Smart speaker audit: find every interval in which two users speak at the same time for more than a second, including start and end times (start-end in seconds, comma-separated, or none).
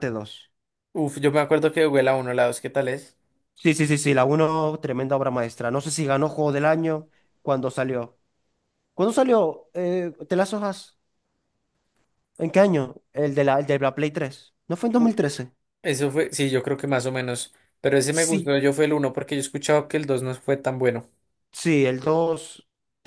none